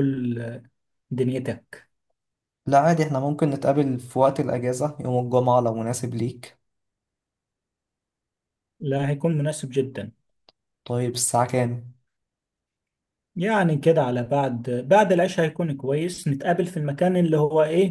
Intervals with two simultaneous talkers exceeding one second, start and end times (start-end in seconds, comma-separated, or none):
none